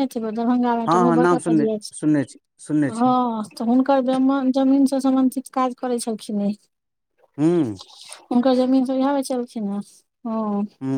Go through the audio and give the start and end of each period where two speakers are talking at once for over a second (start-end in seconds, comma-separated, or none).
0.9-3.2